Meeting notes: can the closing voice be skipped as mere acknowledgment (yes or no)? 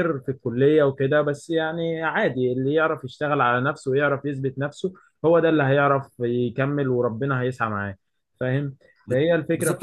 no